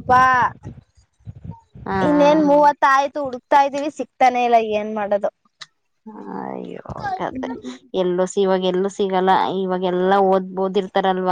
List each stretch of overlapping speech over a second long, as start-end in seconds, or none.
none